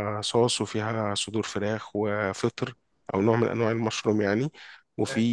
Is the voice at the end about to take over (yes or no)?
no